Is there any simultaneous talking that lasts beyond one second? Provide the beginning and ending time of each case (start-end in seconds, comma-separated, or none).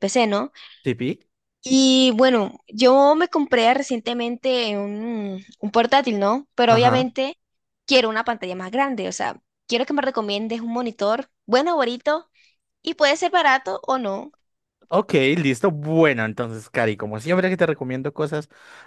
none